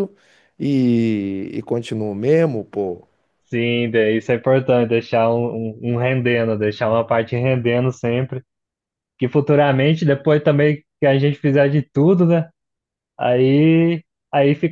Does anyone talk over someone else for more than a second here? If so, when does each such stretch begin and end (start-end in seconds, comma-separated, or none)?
none